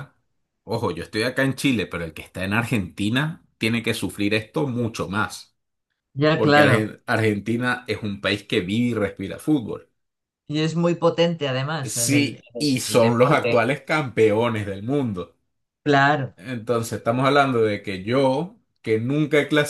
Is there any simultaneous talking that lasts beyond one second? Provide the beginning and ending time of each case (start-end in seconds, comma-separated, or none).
11.8-13.6